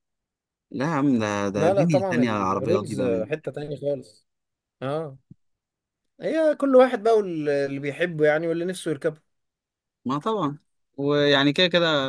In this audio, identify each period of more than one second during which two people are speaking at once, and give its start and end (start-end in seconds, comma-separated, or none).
1.5-3.3